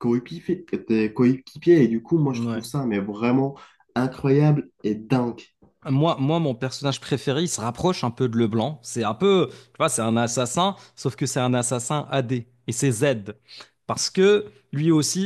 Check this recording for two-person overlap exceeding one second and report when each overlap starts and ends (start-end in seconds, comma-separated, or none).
none